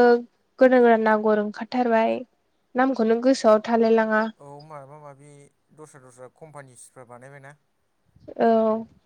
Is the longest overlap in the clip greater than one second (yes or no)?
no